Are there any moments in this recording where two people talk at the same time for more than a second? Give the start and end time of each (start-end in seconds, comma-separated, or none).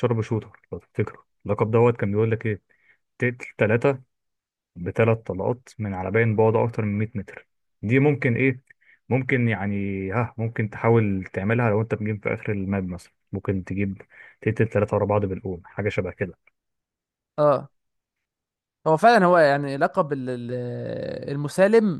none